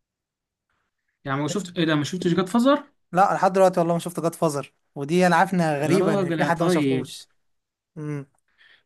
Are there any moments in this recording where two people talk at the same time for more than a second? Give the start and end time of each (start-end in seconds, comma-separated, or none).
5.8-7.1